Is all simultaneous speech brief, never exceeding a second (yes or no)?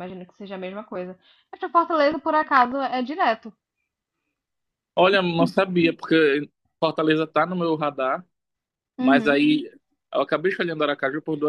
yes